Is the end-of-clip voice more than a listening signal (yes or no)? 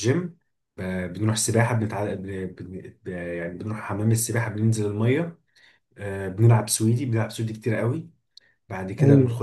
no